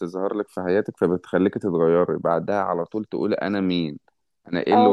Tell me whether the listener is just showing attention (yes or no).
no